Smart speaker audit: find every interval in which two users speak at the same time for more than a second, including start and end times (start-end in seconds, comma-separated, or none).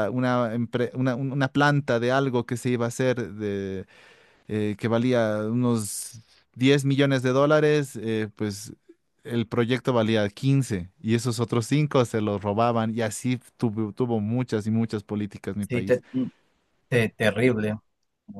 none